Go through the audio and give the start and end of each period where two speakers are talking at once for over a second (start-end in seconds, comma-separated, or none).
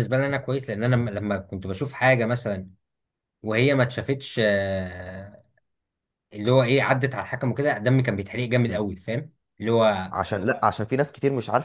none